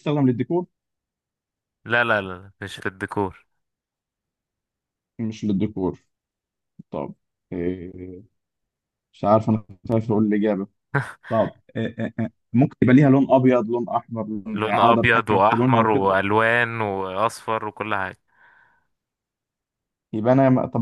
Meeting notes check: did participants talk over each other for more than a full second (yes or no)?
yes